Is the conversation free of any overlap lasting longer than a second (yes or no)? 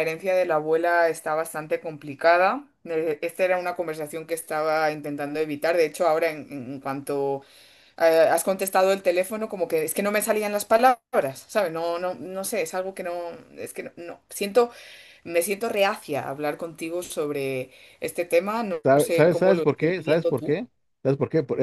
no